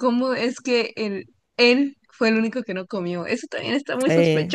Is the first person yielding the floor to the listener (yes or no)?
yes